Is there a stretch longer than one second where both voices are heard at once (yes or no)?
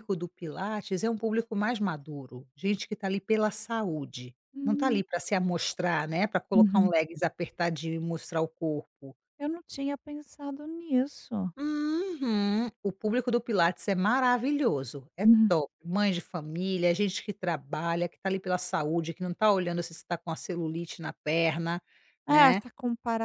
no